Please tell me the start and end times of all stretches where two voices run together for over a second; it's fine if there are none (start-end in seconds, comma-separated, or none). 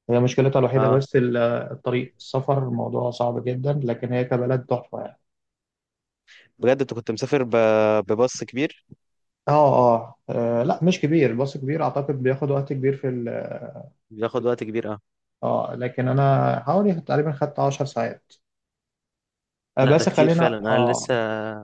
19.8-21.1